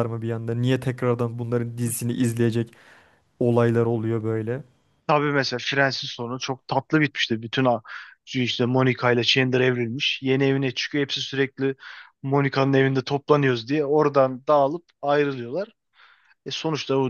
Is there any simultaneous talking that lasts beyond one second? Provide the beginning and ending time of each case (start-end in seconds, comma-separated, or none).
none